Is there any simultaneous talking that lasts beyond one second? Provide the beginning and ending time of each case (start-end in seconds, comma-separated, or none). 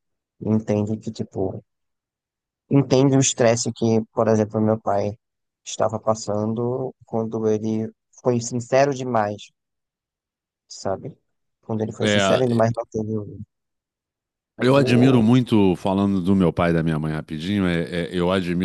none